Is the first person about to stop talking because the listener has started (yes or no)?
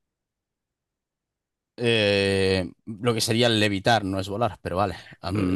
yes